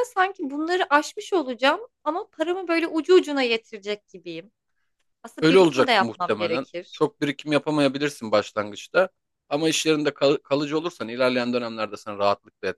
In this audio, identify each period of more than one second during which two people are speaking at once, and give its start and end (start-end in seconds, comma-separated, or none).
5.4-7.0